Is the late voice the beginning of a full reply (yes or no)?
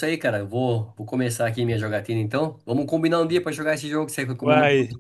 yes